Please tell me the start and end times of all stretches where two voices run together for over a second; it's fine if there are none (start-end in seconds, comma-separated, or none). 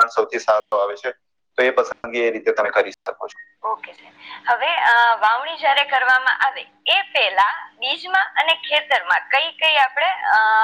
none